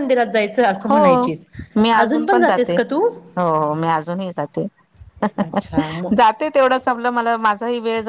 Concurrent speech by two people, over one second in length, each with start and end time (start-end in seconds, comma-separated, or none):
none